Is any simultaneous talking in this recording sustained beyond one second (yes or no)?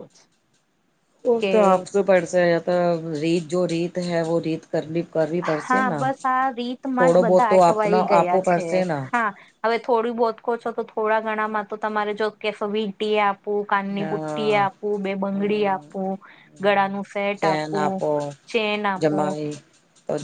yes